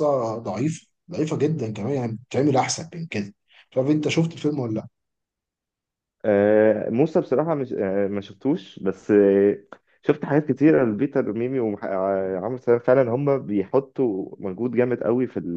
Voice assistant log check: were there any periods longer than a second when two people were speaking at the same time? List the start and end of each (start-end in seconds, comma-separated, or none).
none